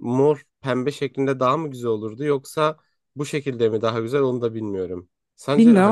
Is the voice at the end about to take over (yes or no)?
yes